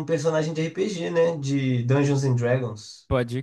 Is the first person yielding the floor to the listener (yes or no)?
yes